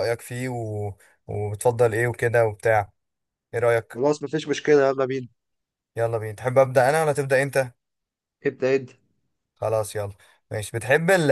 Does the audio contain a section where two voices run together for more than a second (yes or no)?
no